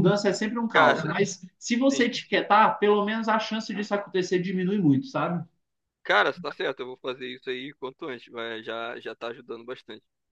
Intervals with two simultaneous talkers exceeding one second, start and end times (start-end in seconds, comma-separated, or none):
none